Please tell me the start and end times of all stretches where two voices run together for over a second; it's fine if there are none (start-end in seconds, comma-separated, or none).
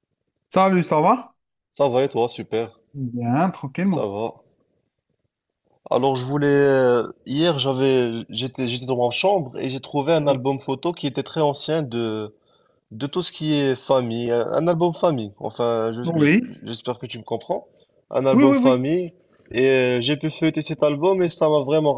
none